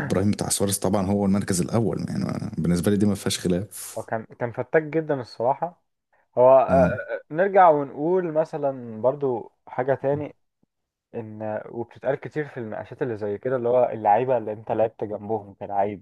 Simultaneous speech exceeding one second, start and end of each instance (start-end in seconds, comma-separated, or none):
none